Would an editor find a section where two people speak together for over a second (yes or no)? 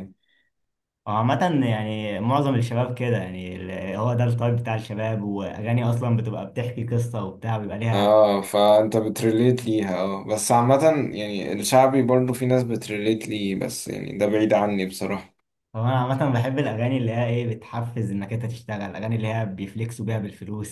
no